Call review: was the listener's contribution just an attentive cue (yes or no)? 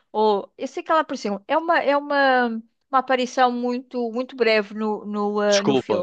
no